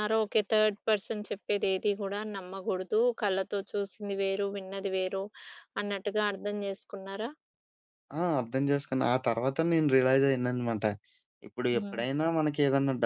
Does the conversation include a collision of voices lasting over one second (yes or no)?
no